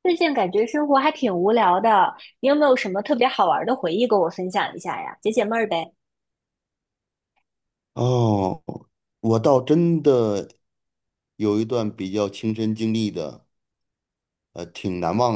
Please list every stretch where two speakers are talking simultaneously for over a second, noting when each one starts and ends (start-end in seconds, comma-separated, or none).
none